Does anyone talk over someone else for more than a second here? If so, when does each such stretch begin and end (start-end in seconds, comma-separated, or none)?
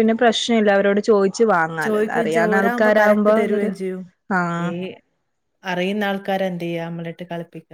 1.9-3.7